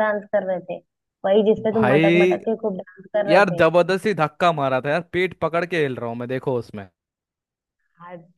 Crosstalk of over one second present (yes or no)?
no